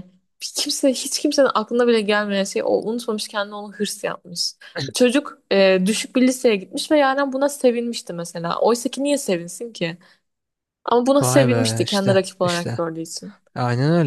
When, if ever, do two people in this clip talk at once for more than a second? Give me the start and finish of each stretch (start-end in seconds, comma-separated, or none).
11.2-12.8